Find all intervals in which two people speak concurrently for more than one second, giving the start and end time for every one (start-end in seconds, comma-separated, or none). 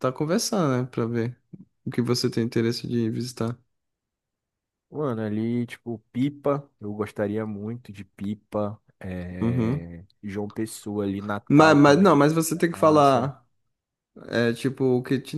11.5-13.3